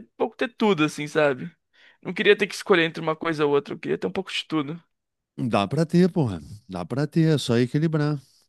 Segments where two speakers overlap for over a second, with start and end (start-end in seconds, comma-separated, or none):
none